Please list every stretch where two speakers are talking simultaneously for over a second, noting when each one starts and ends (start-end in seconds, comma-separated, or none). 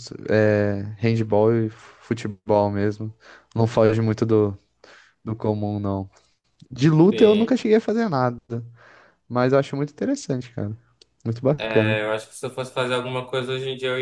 none